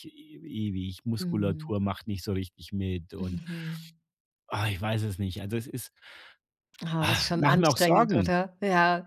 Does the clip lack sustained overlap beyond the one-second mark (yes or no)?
no